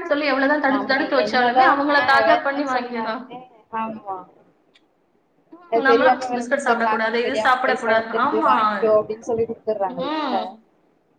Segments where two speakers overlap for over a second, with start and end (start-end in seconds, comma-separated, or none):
0.7-3.2, 5.8-8.5